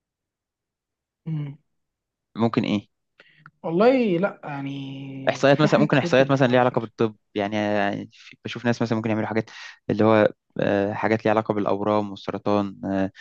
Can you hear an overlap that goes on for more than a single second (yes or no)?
yes